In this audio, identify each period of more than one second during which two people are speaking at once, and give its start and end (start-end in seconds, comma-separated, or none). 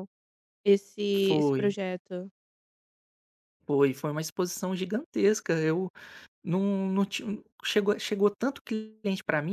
none